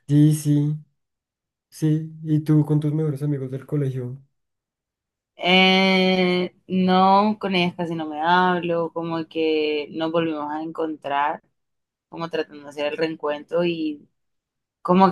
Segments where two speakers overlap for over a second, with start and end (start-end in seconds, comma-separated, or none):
none